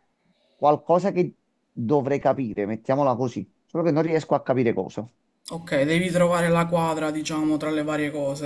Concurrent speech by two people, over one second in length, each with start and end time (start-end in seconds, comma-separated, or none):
none